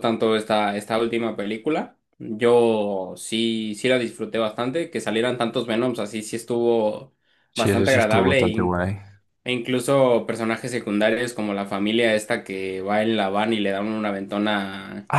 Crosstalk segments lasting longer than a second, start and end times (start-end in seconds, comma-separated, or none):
7.6-8.9